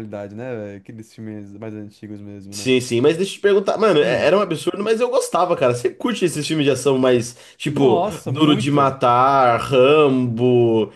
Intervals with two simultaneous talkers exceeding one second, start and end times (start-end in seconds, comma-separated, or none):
7.7-9.0